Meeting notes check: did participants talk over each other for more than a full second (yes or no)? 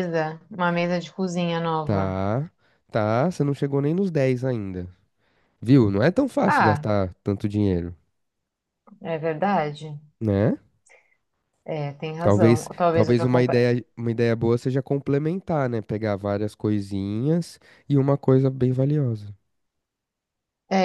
yes